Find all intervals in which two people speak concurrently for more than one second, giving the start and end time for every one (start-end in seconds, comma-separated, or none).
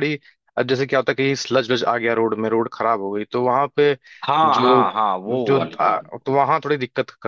none